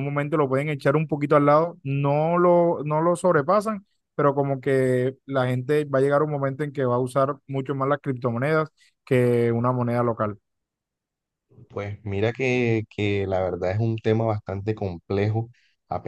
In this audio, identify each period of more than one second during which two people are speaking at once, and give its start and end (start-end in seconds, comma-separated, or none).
none